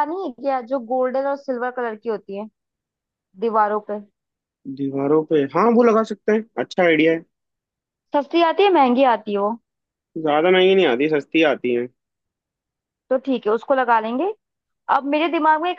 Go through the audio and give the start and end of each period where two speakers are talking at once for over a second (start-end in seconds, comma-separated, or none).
none